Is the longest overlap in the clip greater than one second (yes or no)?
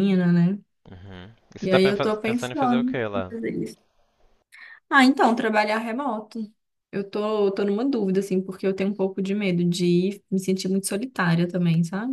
yes